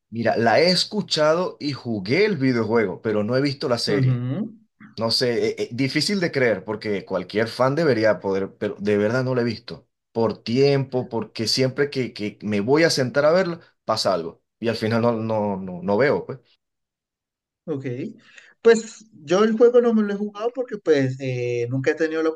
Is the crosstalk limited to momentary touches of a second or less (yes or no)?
yes